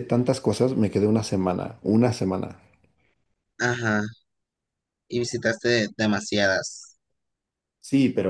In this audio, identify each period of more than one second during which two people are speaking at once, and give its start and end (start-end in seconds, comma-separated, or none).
none